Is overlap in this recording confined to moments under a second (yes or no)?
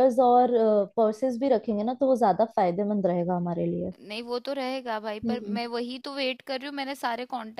yes